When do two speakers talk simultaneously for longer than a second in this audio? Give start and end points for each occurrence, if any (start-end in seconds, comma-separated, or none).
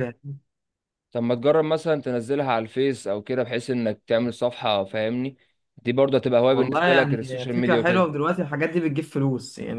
6.5-8.1